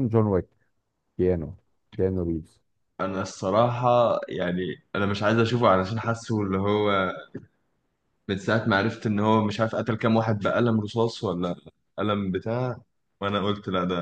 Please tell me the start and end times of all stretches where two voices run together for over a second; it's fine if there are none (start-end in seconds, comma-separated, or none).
none